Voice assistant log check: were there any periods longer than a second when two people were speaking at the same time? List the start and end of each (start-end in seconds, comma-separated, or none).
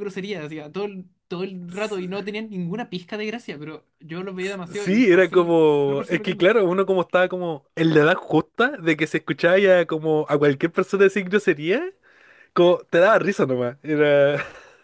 4.4-6.5